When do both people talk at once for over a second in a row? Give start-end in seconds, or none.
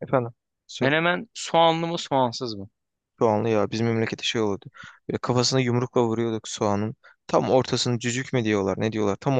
none